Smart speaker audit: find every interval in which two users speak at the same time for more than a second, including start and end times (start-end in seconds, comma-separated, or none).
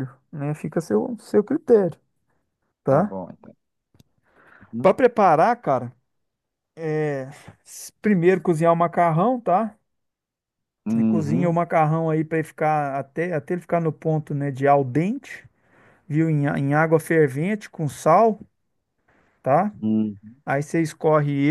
none